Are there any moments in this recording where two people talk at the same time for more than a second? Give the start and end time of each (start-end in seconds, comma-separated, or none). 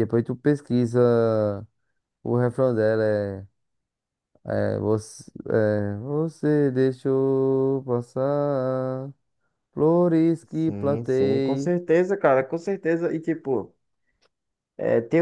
10.5-11.7